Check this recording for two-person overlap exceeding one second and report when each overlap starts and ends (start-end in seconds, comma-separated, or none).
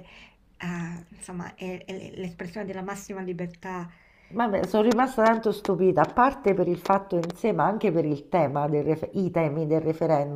none